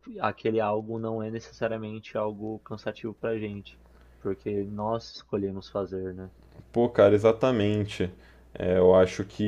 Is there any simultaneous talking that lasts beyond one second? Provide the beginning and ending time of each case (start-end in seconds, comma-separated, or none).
none